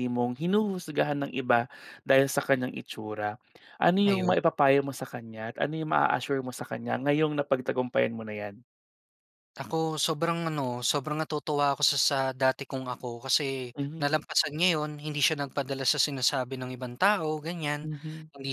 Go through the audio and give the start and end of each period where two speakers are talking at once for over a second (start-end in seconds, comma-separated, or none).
none